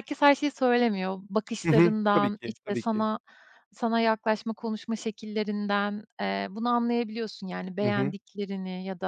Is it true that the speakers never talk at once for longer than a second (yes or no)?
no